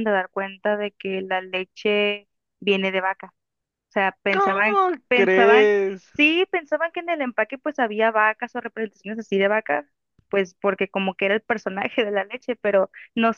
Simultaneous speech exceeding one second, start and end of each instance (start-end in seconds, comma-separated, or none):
4.3-5.7